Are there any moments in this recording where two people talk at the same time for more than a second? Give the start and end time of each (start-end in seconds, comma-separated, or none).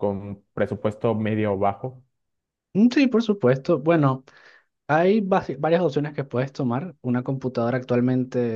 none